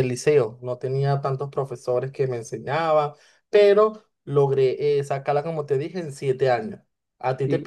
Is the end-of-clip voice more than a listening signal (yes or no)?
no